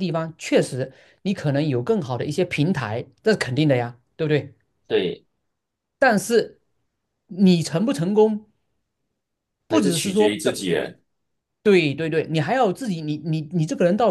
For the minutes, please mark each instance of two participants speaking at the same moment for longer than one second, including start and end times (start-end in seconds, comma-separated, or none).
none